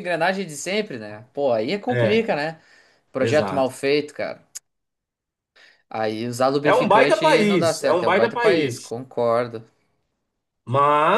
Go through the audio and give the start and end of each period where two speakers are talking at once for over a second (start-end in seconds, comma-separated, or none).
6.6-8.9